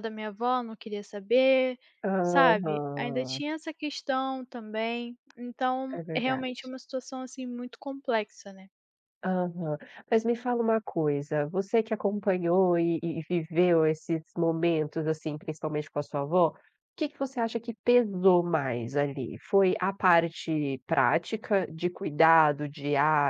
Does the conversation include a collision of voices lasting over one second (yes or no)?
yes